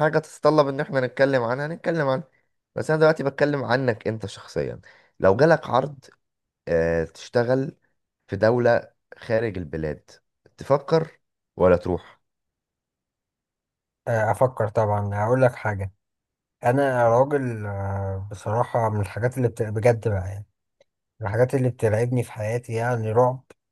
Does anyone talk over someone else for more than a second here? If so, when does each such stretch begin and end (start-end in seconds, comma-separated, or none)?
none